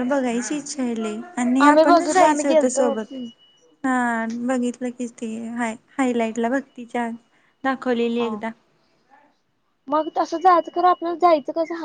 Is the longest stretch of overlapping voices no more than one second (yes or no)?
no